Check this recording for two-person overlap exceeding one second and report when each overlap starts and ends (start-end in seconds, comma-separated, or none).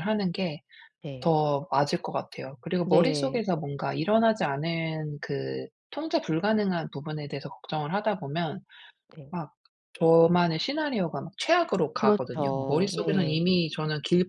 11.9-13.5